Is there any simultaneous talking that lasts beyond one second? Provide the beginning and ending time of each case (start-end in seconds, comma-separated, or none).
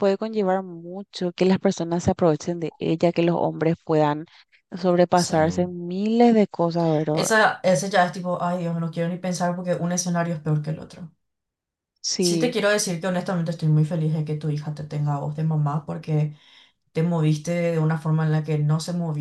none